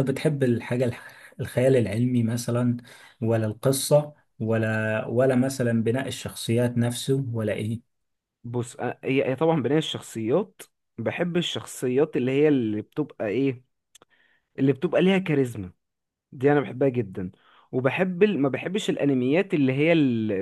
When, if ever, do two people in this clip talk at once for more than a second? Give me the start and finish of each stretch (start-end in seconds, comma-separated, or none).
none